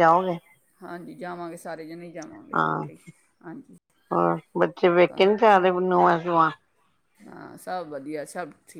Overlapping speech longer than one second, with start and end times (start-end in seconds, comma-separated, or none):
none